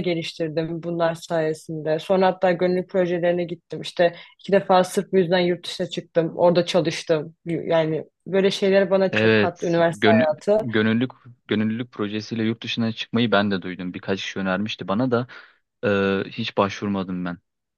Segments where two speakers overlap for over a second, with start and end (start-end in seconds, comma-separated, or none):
9.1-10.7